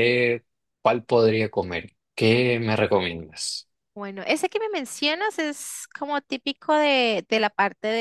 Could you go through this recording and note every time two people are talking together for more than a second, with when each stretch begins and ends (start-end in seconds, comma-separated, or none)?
none